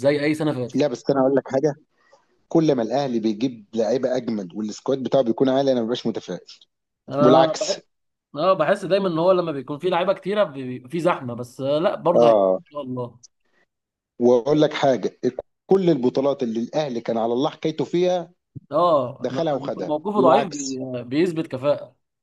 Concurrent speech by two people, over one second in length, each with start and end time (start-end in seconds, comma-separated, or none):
19.2-20.8